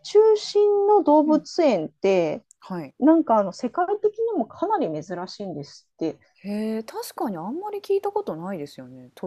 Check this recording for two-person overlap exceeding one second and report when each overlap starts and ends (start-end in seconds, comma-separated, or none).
none